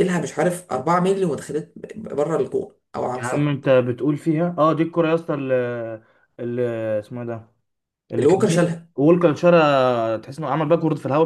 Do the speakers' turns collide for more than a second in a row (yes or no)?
no